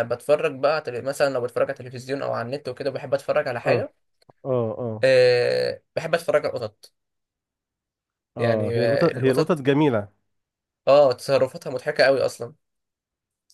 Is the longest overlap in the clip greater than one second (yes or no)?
yes